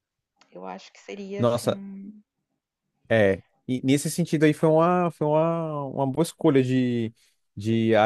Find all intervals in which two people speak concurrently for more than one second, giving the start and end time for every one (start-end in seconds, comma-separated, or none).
none